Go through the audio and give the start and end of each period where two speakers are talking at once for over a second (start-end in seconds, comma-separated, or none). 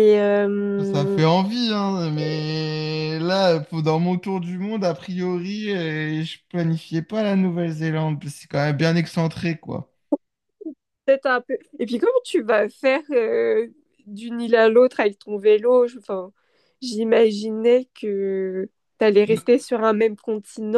none